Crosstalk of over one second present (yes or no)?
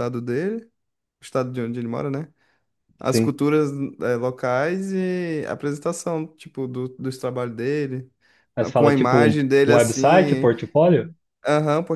yes